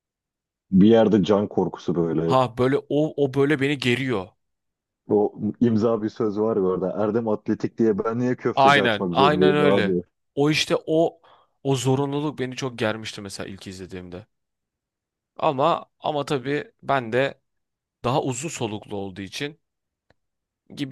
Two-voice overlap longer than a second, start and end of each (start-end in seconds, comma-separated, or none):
8.5-9.9